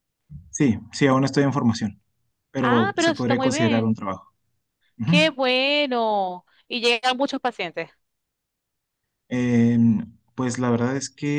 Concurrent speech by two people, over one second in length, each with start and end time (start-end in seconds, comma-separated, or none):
2.6-3.9